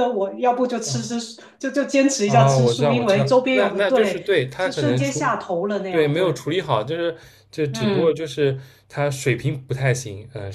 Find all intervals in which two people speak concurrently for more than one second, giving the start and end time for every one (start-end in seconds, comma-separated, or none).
2.2-5.2